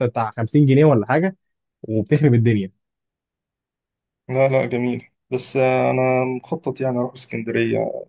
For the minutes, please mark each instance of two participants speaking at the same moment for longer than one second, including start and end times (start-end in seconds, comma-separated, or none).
none